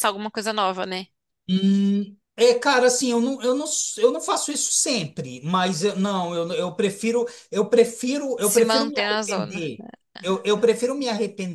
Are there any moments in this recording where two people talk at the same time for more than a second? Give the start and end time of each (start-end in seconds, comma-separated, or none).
8.4-9.7